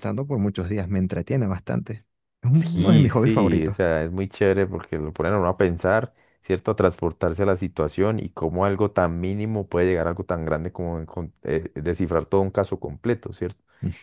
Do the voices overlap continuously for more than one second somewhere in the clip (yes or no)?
yes